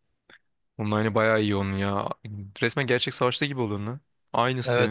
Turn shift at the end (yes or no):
yes